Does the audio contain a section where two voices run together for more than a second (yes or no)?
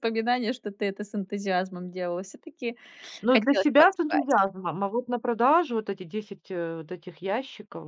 yes